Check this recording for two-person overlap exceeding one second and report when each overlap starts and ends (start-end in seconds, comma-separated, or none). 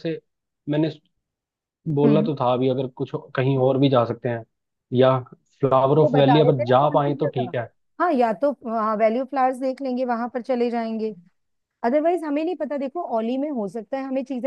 6.0-7.5